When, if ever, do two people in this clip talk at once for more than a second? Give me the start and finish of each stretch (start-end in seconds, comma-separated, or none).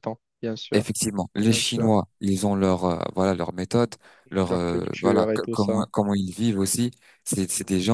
4.4-5.8